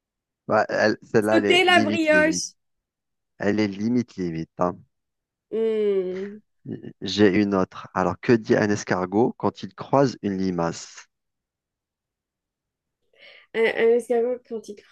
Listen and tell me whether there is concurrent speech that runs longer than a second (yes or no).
yes